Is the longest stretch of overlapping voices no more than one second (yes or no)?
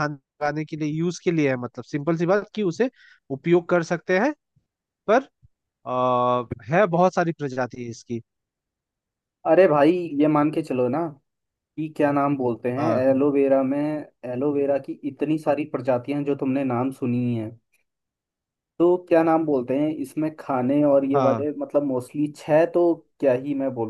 yes